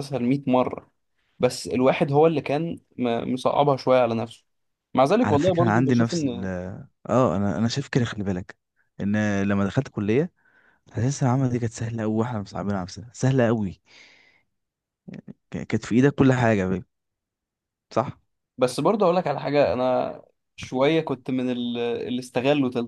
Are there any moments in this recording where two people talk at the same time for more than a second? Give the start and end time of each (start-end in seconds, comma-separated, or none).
5.2-6.5